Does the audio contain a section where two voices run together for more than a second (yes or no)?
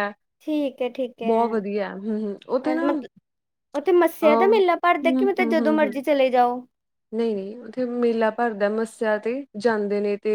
no